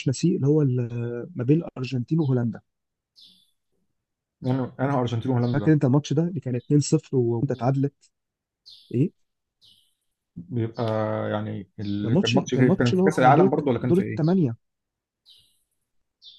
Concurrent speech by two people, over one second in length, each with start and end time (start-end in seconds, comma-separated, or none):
12.0-14.2